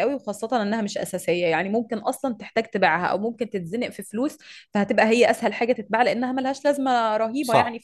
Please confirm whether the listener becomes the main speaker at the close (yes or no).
yes